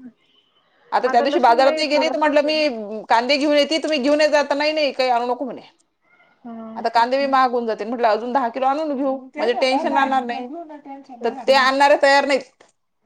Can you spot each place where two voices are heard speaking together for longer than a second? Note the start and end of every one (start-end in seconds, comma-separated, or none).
1.2-2.7